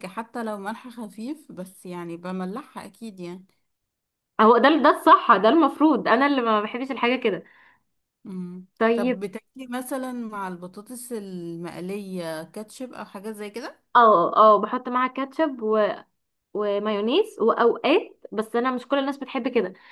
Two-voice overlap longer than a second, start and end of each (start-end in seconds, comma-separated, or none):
none